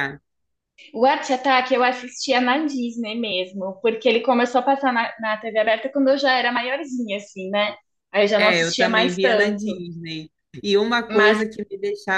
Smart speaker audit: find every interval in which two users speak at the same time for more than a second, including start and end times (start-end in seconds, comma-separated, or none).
8.4-9.8